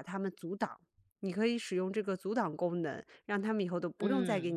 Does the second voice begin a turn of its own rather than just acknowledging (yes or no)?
no